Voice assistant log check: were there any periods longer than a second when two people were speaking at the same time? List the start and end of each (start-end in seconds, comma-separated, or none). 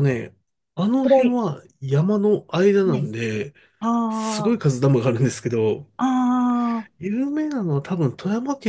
none